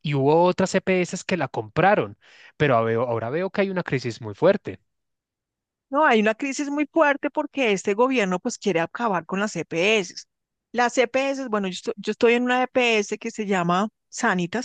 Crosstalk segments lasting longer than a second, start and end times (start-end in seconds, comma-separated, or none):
none